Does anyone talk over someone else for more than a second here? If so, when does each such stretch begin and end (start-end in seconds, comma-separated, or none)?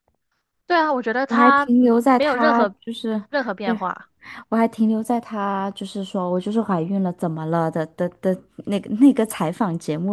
1.3-2.8